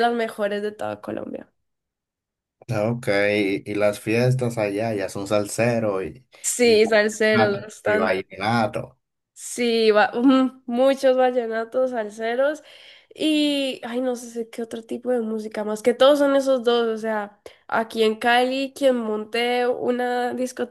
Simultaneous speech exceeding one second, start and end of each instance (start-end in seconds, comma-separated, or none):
6.6-8.2